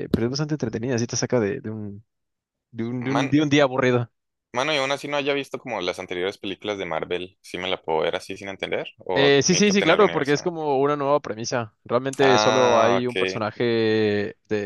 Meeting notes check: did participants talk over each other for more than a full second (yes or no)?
yes